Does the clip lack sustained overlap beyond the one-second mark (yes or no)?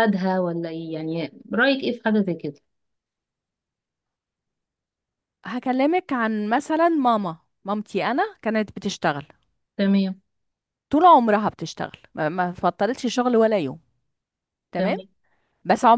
yes